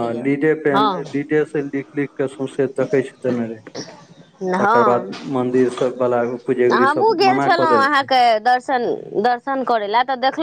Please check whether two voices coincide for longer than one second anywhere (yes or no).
no